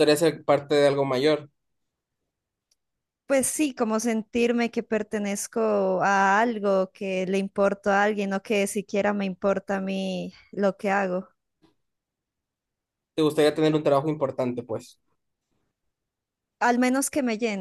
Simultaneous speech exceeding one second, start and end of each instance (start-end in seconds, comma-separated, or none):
none